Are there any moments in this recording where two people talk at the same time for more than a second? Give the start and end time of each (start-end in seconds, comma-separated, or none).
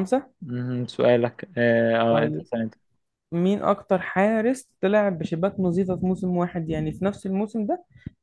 none